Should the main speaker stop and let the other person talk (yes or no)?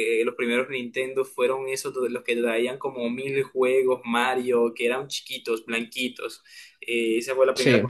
no